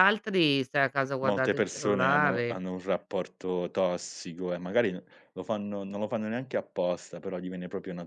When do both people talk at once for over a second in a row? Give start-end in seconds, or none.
1.2-2.6